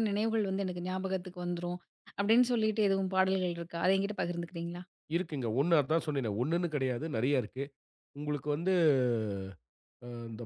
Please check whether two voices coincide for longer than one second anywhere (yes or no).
no